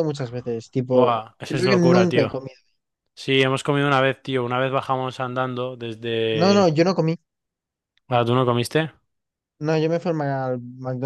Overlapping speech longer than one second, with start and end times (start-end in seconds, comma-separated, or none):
0.9-2.3